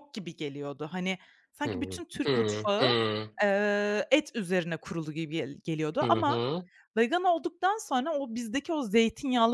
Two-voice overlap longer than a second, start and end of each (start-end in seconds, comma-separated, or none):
1.7-3.0